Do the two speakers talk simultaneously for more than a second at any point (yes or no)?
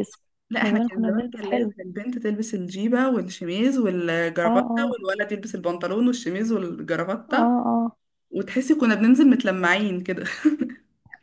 yes